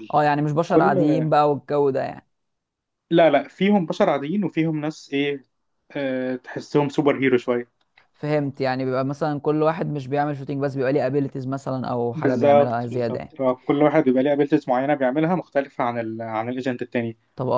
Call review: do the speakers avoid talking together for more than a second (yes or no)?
no